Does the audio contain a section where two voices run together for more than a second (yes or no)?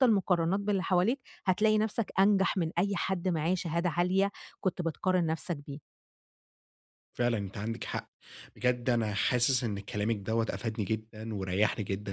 no